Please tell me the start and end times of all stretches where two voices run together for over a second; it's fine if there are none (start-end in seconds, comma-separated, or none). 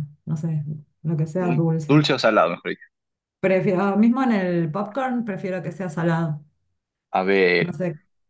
none